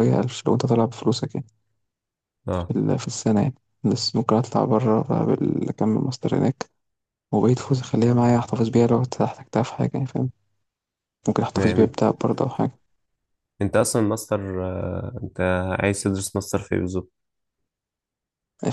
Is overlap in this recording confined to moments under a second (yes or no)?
yes